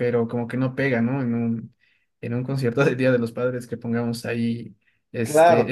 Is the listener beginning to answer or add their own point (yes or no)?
yes